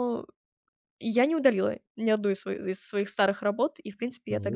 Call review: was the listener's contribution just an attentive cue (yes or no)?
yes